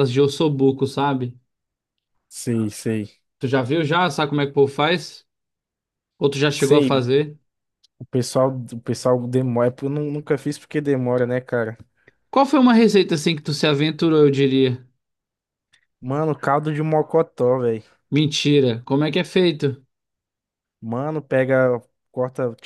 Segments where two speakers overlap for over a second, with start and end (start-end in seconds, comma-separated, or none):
none